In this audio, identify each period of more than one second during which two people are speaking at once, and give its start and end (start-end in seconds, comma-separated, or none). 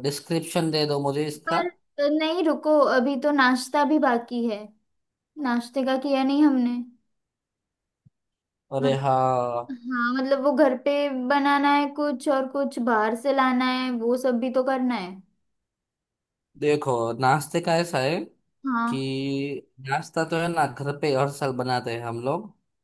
none